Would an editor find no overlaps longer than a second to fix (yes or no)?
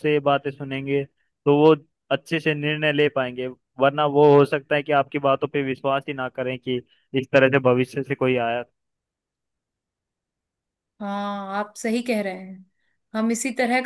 yes